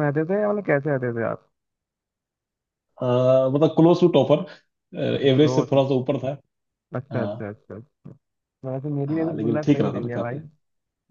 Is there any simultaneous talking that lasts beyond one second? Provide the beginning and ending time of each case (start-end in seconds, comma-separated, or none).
9.1-10.4